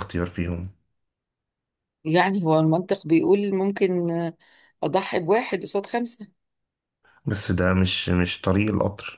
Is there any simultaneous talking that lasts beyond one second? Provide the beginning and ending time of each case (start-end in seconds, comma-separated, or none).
none